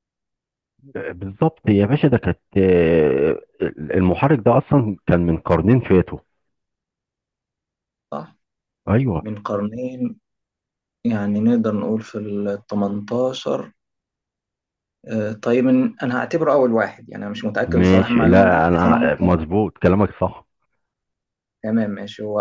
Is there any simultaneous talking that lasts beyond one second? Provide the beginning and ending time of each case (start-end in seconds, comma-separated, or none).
17.6-19.3